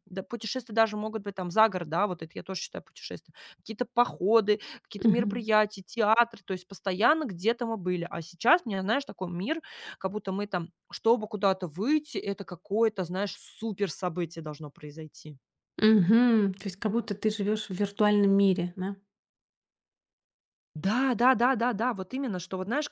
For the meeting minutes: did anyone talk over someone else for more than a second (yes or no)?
no